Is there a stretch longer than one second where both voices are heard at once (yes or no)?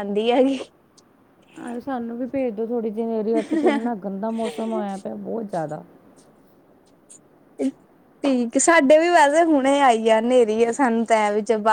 no